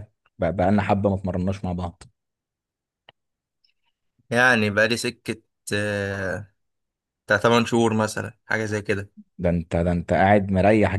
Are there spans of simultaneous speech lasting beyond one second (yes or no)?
no